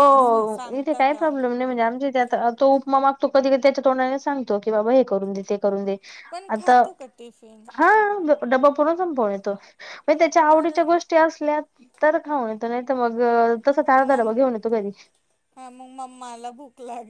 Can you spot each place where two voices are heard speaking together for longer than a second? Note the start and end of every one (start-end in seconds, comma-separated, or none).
none